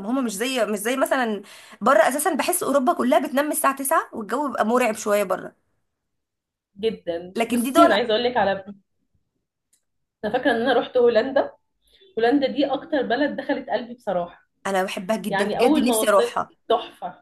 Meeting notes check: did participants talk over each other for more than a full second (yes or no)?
yes